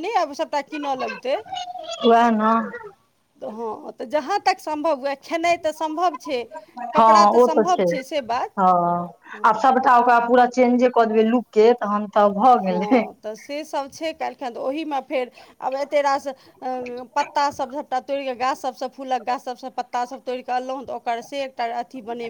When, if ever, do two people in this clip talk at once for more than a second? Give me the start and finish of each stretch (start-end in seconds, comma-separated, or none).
none